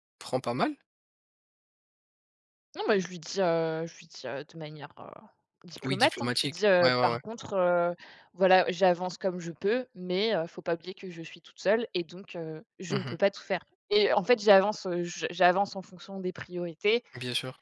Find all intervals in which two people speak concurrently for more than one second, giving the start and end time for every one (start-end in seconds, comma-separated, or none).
5.8-7.2